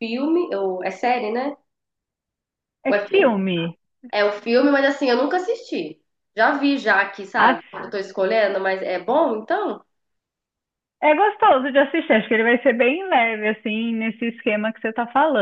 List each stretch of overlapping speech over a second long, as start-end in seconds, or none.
none